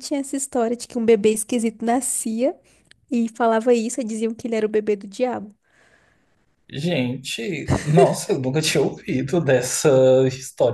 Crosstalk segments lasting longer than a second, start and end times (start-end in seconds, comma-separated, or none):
none